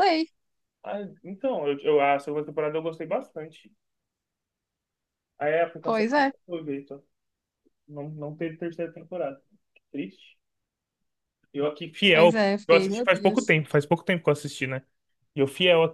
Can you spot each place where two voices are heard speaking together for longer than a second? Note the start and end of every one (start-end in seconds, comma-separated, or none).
12.1-13.6